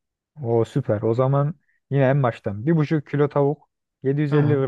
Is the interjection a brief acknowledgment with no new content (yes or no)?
yes